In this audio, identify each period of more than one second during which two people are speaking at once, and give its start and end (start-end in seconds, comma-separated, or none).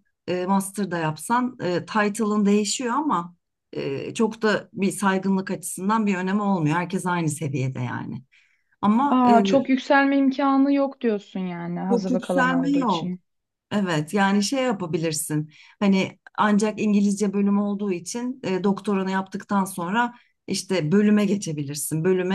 11.9-13.2